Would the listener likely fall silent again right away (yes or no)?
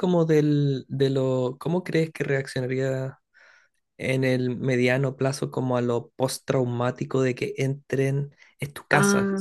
yes